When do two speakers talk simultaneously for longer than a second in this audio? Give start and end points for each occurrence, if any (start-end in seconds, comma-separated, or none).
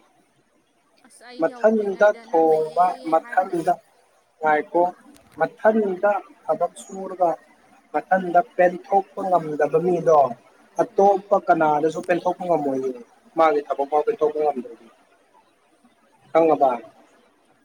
1.4-3.6